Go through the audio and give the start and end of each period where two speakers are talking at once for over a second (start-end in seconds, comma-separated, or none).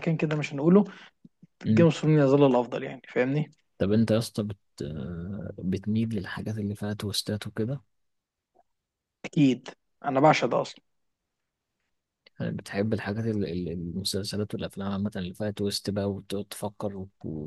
none